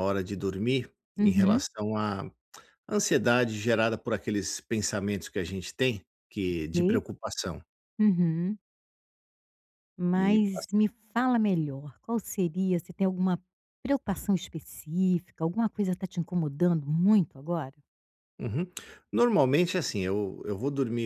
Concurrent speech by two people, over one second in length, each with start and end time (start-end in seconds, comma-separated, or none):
none